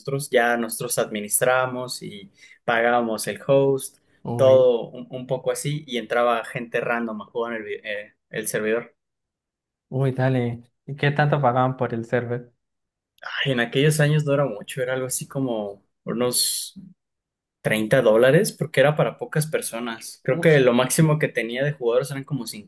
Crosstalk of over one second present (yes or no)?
no